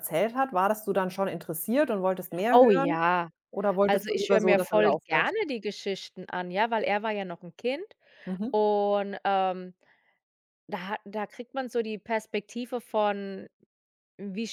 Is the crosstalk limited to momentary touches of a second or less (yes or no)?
no